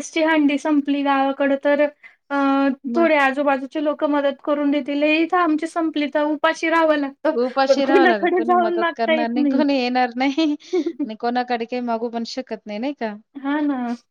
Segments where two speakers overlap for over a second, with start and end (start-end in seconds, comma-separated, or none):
7.4-9.3